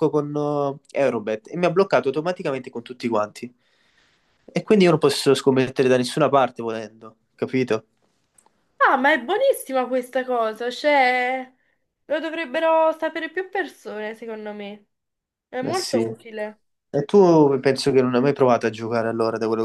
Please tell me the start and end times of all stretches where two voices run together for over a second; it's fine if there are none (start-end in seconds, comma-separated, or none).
none